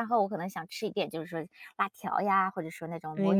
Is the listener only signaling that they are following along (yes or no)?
yes